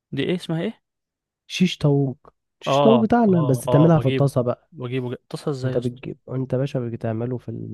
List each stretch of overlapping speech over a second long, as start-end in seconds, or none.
2.7-4.3